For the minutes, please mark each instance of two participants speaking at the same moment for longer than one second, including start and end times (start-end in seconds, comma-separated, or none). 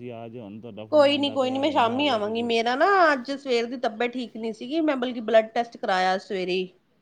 0.9-2.5